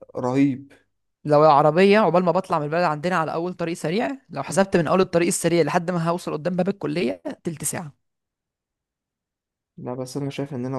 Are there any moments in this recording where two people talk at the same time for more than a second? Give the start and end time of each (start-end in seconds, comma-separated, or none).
none